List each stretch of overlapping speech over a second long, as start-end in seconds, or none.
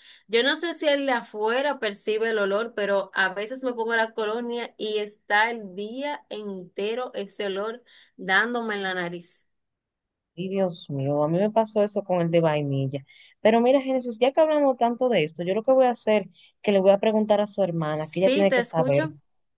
17.9-19.1